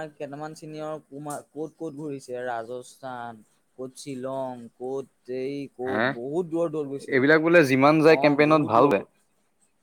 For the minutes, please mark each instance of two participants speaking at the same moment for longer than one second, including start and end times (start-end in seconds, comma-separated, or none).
7.2-9.0